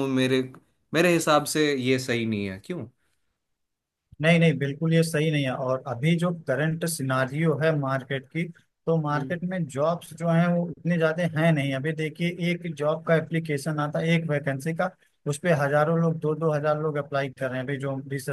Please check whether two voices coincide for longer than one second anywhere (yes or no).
no